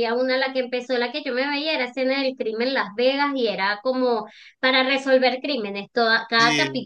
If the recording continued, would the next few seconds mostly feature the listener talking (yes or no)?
no